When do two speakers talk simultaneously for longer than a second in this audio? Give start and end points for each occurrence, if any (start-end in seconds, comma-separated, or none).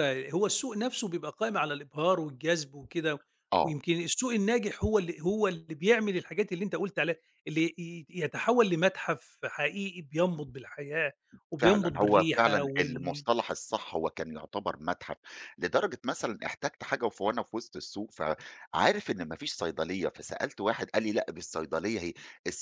11.6-13.2